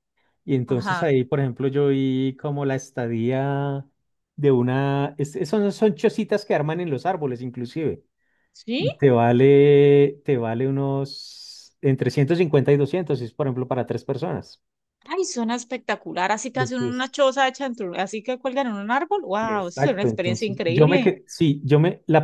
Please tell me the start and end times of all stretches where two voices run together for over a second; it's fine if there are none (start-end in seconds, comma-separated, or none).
19.4-21.1